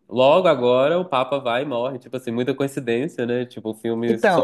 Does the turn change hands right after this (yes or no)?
no